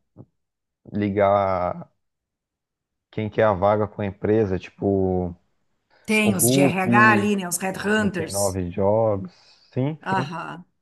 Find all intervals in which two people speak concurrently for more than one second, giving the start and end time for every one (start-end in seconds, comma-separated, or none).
6.2-8.6